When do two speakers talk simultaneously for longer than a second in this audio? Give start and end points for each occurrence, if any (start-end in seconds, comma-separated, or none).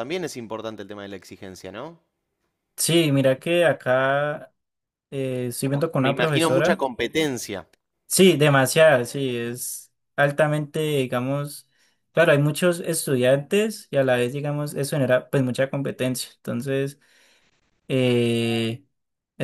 5.6-6.8